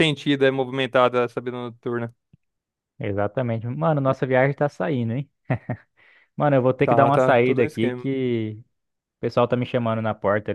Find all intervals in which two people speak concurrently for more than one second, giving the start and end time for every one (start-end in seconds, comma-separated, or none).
6.8-8.1